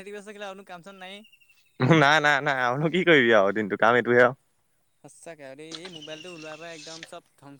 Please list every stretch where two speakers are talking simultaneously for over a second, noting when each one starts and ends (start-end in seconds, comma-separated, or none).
none